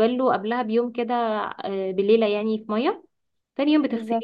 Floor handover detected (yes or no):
no